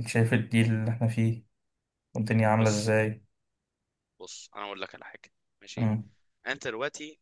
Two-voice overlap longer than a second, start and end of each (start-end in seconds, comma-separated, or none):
none